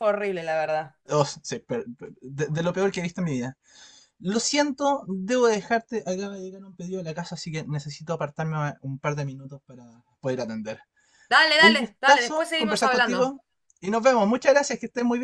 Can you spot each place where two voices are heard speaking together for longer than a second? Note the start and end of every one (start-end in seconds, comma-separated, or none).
11.6-13.3